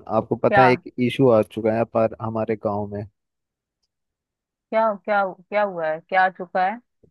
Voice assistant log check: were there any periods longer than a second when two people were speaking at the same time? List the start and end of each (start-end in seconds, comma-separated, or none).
none